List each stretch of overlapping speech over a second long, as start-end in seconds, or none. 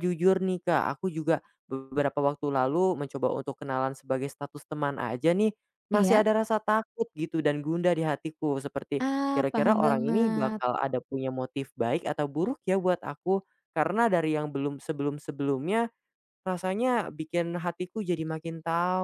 9.1-10.6